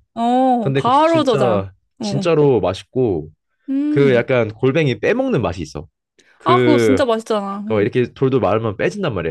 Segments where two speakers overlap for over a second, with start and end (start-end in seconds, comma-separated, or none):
0.6-2.3